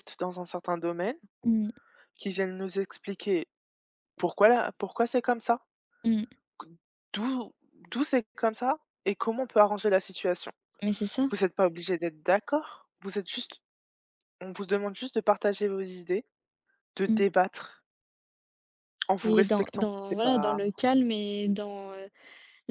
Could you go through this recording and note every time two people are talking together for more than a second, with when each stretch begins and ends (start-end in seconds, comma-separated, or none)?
19.2-20.6